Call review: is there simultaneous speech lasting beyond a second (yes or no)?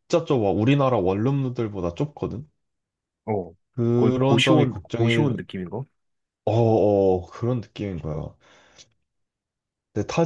yes